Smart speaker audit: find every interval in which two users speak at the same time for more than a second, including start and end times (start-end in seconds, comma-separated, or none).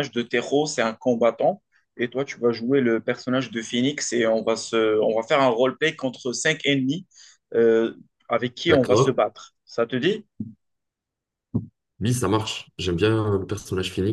none